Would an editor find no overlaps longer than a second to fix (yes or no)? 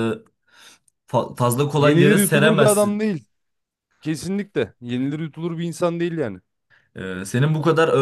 no